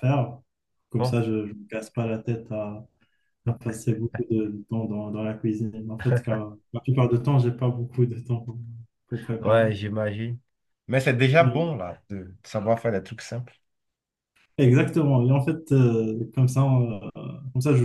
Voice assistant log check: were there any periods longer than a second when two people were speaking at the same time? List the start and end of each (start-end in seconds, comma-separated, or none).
none